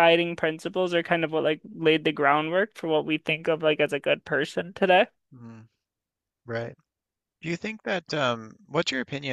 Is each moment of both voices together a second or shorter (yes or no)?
yes